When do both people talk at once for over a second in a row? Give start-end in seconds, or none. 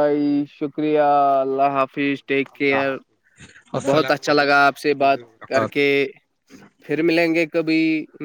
3.9-5.9